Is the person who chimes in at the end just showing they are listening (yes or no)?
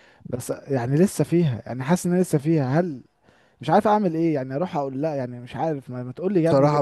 no